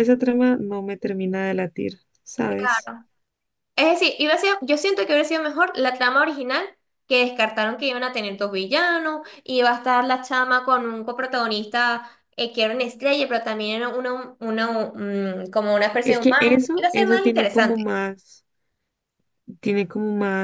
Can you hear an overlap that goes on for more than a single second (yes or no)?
yes